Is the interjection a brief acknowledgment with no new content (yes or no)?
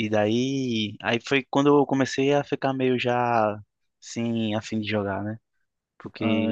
yes